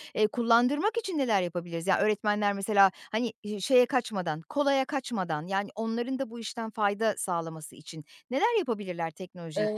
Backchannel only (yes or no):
no